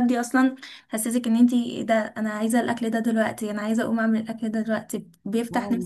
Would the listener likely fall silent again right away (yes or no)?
no